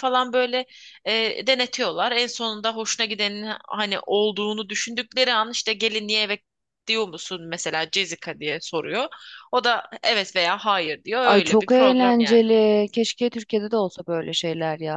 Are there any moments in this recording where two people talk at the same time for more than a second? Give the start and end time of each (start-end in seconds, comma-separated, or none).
11.2-12.4